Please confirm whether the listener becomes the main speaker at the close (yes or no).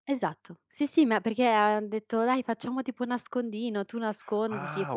yes